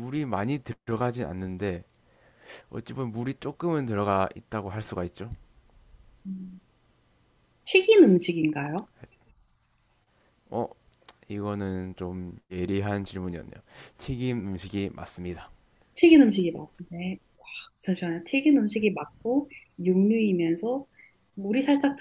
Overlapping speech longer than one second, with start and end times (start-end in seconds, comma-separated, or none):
none